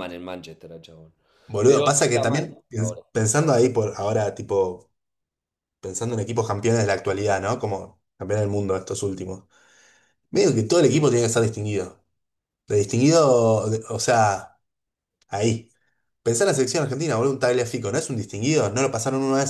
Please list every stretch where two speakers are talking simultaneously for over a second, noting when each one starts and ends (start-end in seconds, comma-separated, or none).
1.6-3.0